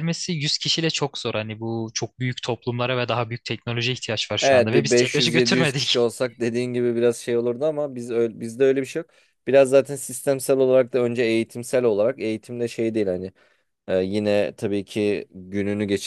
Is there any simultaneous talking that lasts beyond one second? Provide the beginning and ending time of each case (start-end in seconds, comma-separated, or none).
4.4-6.1